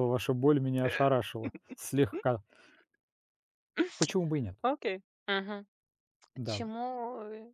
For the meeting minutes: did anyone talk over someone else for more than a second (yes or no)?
no